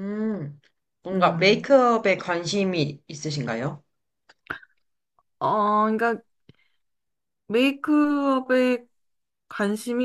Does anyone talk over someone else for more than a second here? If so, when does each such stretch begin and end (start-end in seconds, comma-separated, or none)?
none